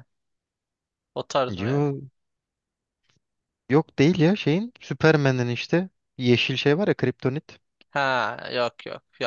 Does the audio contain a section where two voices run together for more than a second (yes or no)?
no